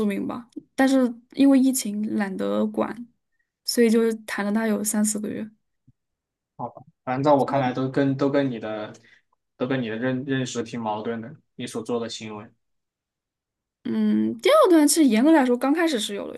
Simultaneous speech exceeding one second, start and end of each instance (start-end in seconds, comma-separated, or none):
none